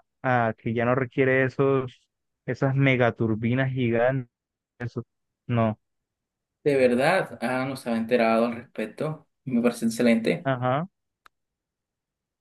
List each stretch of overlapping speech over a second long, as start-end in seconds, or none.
none